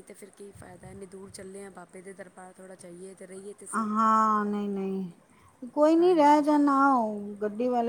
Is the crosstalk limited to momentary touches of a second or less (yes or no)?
yes